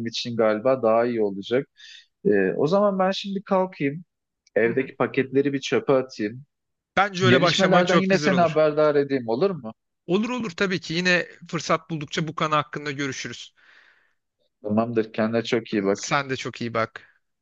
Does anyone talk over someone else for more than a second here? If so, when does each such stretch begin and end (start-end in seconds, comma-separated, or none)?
7.3-8.7